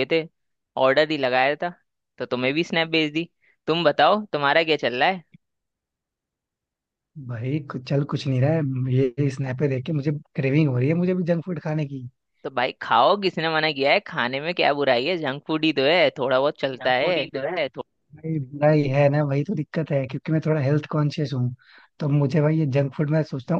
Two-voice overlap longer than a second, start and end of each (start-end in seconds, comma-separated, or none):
none